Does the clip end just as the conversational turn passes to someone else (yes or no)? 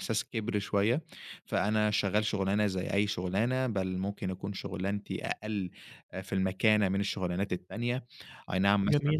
no